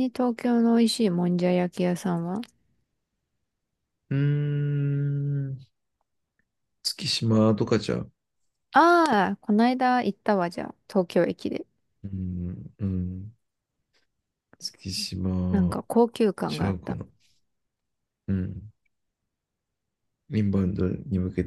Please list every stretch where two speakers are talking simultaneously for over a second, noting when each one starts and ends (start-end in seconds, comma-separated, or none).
none